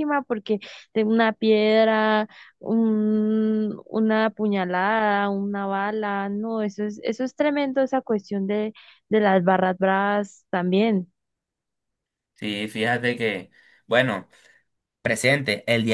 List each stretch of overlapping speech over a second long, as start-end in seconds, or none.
none